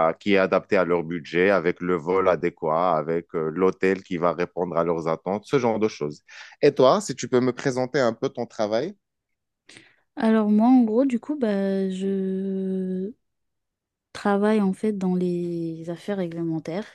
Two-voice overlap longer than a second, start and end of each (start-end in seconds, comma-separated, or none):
none